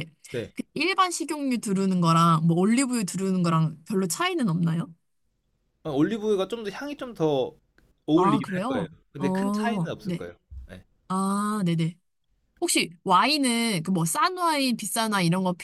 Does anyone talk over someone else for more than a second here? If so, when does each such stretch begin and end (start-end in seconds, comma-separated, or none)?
8.1-10.2